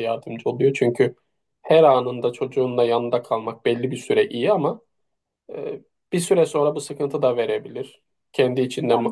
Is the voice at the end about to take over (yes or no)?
no